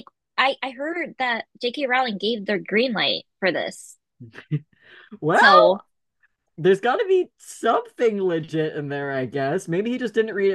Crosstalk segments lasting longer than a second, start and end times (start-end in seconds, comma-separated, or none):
none